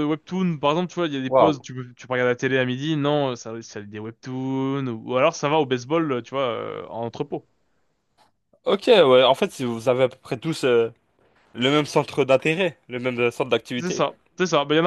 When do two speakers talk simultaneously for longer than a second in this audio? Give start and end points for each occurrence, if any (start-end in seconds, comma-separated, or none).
none